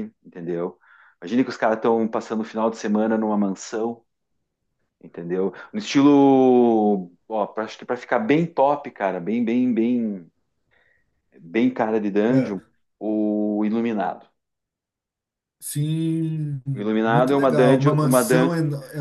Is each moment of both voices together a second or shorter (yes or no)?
no